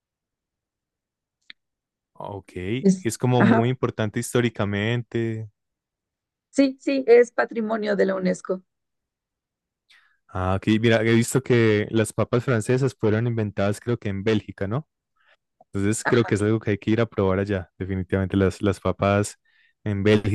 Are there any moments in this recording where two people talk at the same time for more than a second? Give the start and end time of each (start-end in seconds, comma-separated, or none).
none